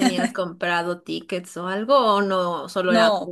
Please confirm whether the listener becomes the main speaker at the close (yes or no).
yes